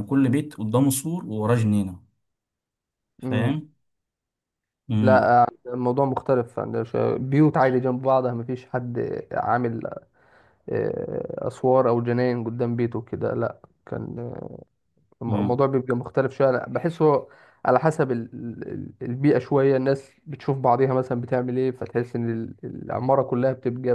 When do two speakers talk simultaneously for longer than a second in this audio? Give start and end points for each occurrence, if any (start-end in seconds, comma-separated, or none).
none